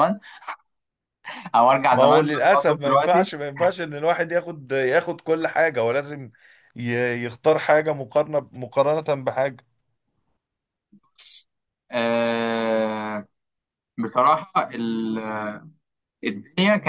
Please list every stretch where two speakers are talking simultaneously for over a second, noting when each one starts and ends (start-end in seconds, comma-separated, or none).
1.9-3.3